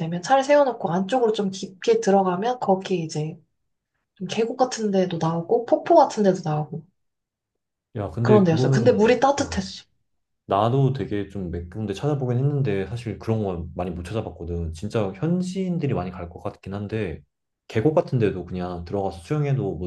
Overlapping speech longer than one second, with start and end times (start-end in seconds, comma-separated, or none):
8.2-9.7